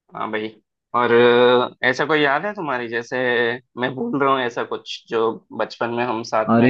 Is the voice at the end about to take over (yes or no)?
yes